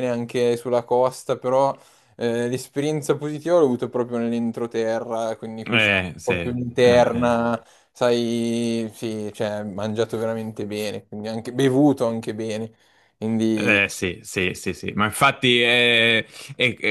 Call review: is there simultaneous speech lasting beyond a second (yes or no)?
yes